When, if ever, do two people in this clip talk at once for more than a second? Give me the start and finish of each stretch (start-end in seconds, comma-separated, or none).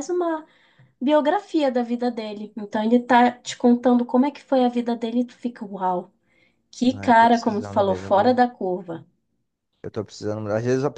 6.9-8.4